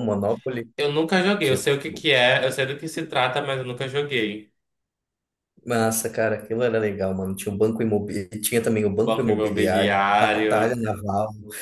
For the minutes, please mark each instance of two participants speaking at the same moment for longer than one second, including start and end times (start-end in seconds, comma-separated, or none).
9.0-10.8